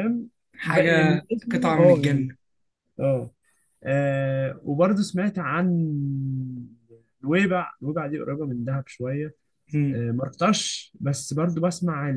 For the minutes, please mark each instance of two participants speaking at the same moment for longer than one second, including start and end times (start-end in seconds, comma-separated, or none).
0.6-2.3